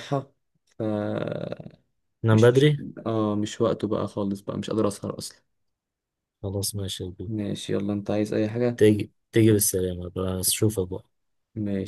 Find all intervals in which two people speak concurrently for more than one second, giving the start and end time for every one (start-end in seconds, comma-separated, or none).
none